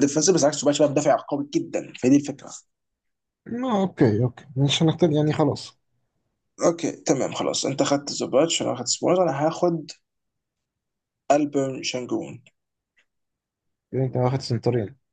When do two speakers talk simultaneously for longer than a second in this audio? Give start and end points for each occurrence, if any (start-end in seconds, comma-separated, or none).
none